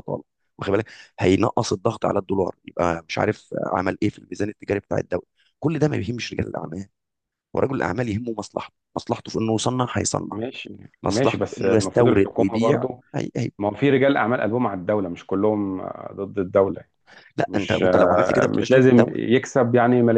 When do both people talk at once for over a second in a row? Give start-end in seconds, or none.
11.0-13.0, 17.5-19.3